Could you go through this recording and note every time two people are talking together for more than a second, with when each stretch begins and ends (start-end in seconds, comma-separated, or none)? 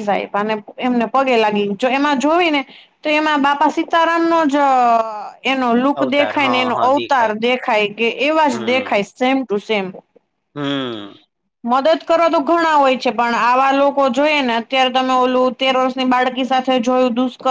6.0-7.3